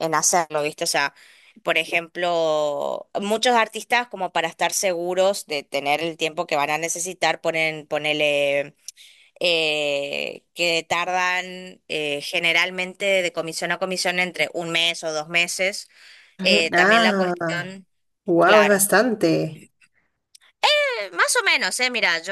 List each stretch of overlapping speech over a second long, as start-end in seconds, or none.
16.4-17.8